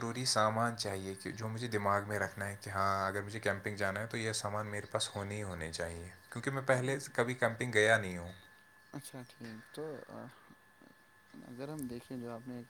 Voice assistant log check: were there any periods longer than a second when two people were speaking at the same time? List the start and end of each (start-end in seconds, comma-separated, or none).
none